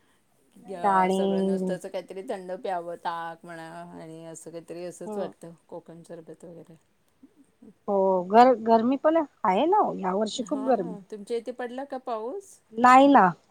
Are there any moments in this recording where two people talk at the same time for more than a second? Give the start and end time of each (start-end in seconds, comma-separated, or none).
none